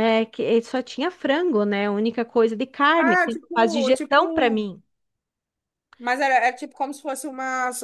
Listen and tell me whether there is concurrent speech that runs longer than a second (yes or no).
yes